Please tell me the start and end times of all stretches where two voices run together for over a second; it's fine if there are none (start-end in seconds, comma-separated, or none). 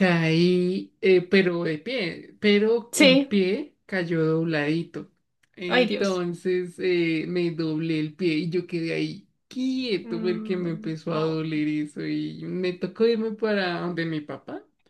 10.0-11.4